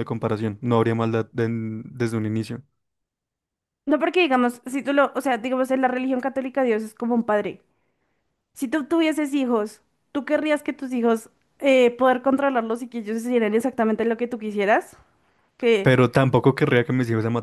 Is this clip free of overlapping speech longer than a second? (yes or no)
yes